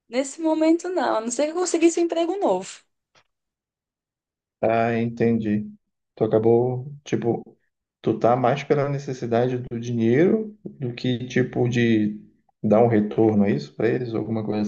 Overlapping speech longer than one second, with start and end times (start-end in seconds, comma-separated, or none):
none